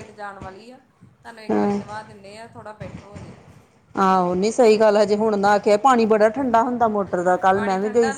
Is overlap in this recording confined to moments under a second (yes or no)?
yes